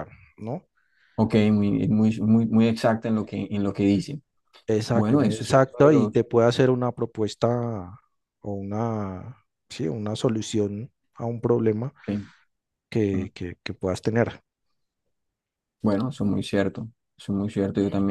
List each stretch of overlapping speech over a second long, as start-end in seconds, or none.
4.9-6.2